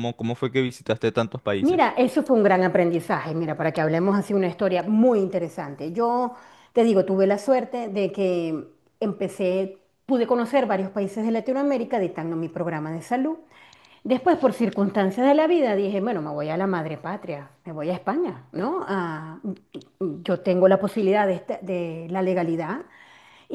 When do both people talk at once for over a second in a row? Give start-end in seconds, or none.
none